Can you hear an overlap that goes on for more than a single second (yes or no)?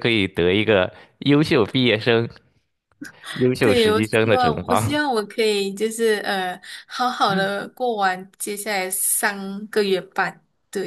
yes